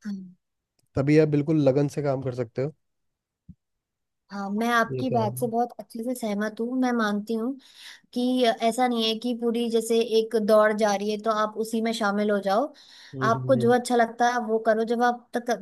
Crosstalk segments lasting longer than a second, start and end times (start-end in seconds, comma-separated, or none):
none